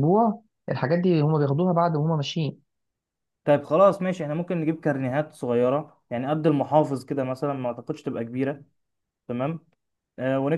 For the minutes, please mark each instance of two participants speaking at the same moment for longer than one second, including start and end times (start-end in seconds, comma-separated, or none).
none